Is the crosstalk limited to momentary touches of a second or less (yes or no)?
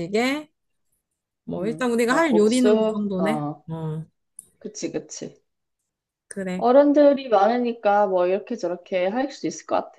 no